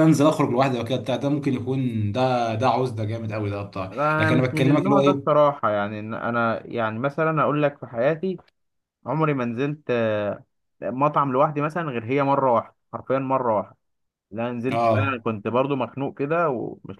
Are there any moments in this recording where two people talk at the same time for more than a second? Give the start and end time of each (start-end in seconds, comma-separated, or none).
3.9-5.3